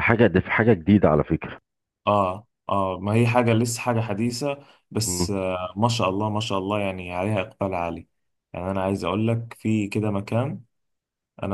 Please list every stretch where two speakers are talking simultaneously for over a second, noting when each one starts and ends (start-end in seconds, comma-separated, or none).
none